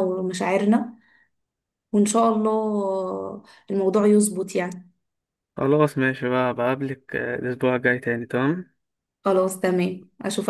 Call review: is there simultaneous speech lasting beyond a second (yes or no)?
no